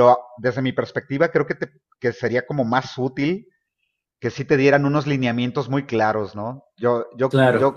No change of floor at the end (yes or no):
yes